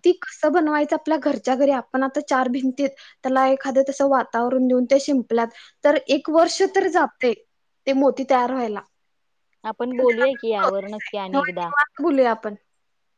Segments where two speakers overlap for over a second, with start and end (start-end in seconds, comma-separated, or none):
9.9-11.7